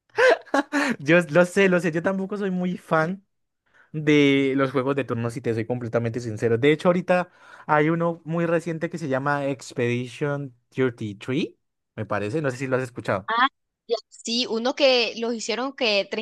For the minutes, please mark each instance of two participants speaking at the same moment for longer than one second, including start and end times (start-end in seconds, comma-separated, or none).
none